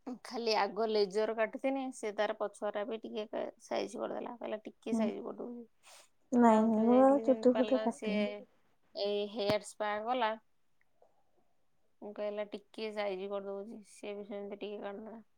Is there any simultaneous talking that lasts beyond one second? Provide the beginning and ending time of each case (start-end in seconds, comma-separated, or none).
6.4-8.1